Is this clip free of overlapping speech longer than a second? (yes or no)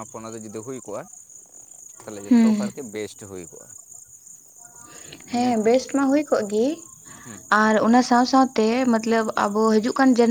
yes